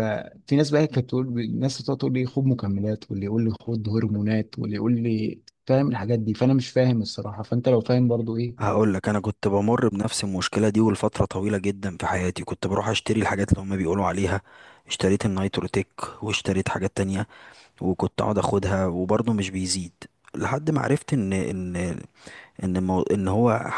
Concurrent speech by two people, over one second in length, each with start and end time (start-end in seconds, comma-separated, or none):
none